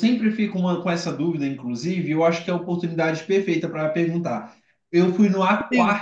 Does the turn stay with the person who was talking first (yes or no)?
yes